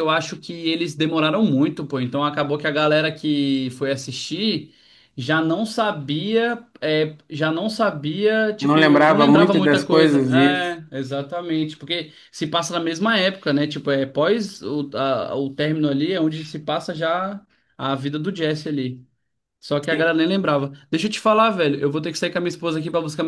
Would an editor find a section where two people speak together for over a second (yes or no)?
yes